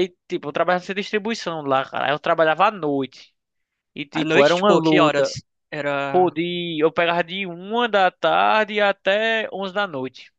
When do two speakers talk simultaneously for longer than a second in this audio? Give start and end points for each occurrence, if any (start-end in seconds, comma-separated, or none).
4.1-5.4